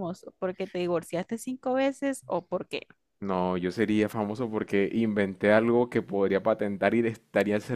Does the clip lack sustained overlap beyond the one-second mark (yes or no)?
yes